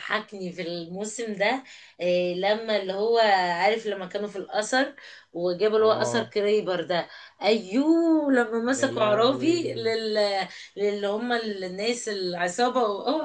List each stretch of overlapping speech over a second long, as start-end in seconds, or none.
8.7-9.9